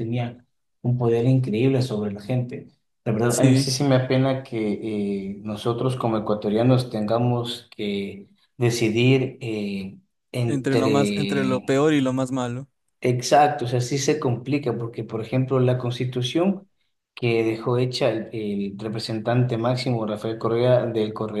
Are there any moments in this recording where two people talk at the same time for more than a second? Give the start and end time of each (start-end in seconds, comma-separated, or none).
10.5-11.8